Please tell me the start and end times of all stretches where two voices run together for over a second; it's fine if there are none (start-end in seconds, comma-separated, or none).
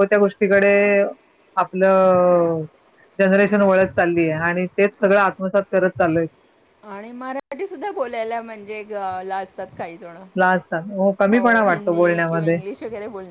none